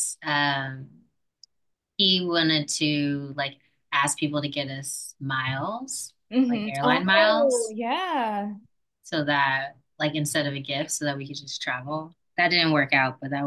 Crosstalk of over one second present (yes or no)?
yes